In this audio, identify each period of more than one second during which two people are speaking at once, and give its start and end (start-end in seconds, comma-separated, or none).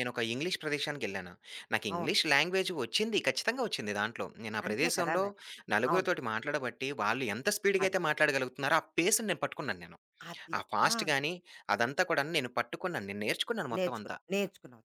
none